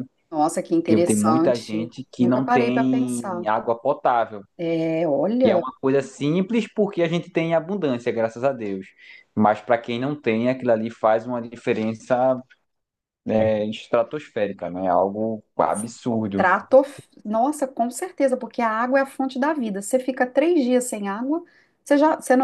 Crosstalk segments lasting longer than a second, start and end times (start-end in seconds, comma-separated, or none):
0.8-3.5